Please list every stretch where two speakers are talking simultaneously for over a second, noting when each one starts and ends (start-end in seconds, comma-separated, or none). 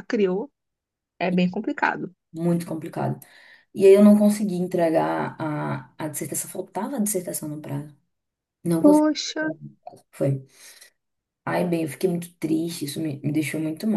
none